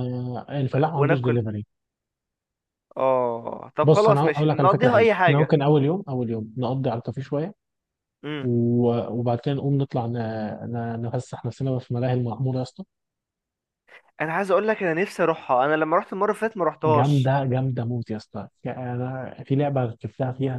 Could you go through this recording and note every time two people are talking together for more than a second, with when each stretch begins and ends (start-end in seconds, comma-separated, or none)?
3.8-5.5